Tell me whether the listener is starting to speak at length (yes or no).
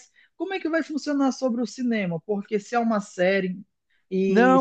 yes